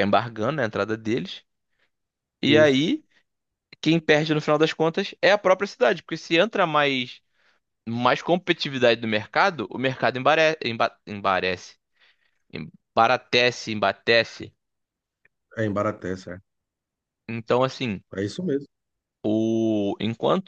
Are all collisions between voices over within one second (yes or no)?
yes